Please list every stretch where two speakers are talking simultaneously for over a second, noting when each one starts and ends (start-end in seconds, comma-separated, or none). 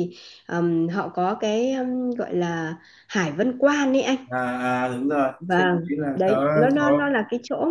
5.4-7.1